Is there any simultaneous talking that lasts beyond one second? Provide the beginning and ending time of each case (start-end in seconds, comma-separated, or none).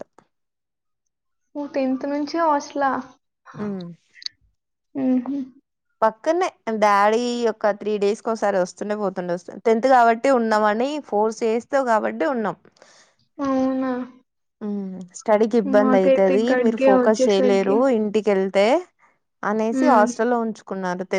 15.8-17.7